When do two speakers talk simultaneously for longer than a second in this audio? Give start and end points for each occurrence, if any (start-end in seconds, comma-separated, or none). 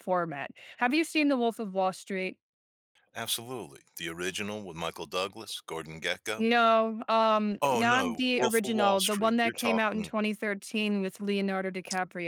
7.6-10.2